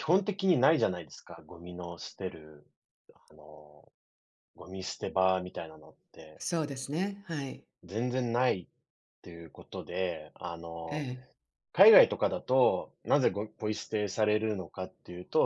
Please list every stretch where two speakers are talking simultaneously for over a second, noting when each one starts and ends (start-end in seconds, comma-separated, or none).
none